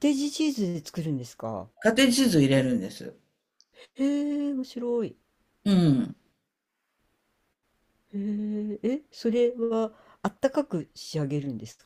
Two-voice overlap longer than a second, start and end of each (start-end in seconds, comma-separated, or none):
none